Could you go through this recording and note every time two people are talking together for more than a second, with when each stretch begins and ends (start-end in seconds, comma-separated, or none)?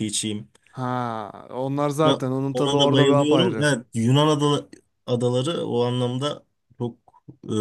2.0-3.7